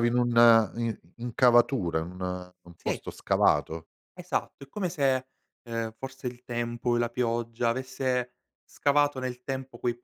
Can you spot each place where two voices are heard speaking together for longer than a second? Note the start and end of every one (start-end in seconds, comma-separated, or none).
none